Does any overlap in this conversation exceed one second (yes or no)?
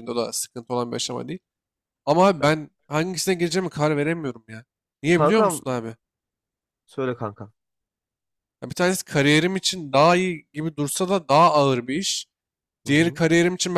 no